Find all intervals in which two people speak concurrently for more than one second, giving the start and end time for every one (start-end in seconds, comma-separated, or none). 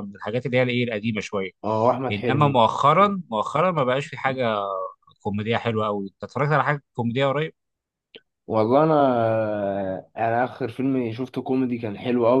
none